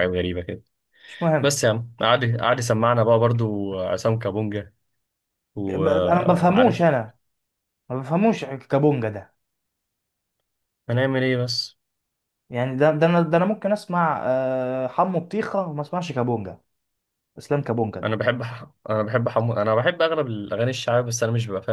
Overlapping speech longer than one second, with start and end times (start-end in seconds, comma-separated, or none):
5.7-6.8